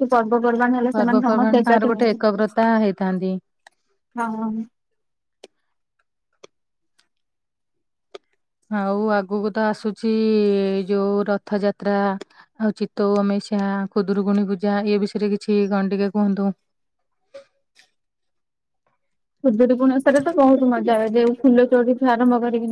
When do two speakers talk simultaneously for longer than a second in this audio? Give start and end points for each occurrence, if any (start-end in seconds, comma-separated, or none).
0.9-2.2